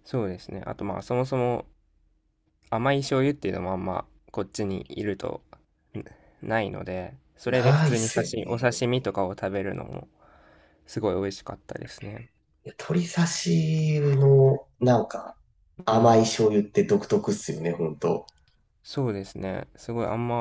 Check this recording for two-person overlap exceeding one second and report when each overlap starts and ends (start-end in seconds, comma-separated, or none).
7.5-8.7